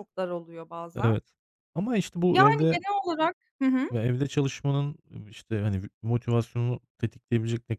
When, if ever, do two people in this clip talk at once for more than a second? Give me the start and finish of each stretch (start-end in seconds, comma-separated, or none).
none